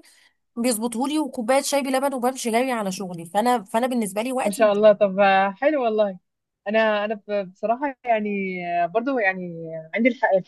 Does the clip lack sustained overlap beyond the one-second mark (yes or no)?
yes